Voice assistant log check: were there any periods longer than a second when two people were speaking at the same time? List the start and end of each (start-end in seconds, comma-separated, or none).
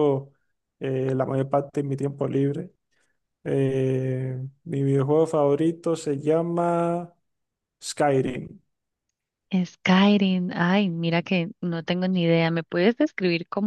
none